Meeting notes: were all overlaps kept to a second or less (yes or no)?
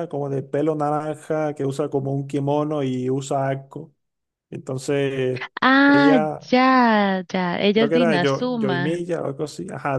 no